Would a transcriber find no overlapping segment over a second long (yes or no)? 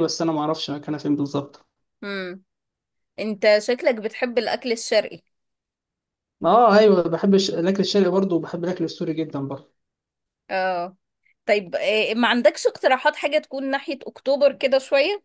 yes